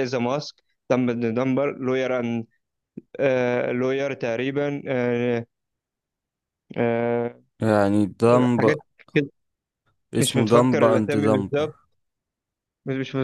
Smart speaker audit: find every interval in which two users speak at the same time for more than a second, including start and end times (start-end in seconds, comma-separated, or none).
10.2-11.5